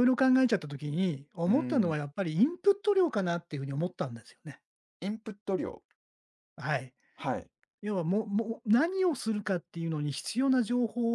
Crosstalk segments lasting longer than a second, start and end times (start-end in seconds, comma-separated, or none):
none